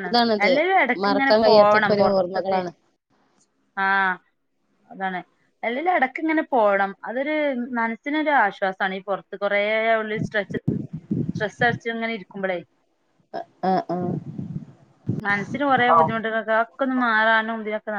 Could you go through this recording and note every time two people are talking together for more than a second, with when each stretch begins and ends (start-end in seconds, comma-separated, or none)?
1.0-2.6